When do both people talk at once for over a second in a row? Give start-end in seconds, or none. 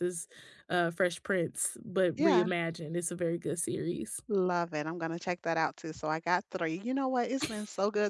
none